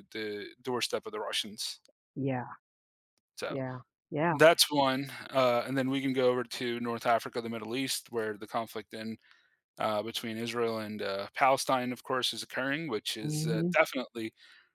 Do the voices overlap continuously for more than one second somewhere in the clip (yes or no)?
no